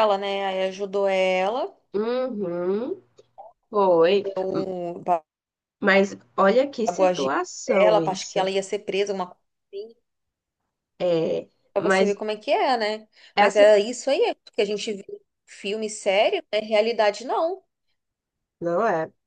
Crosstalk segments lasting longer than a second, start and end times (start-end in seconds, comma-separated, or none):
6.9-8.4